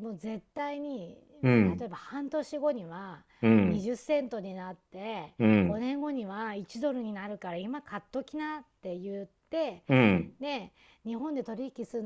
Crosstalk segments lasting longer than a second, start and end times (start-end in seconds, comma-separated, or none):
none